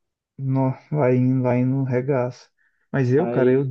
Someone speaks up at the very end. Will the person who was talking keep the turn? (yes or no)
yes